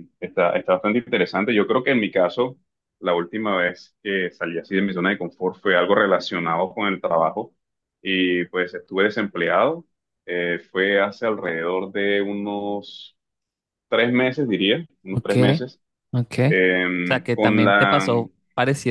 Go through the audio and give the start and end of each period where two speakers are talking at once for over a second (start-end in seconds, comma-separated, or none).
16.5-18.1